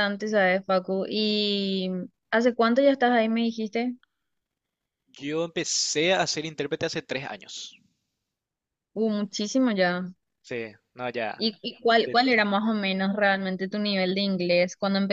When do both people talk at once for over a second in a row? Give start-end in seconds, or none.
none